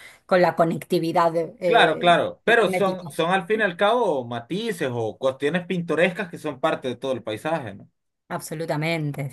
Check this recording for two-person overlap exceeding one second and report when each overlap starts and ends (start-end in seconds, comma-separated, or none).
1.7-3.1